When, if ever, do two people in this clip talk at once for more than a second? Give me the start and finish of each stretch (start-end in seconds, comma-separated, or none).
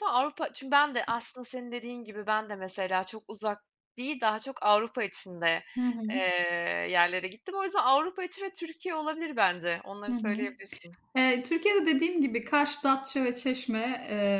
none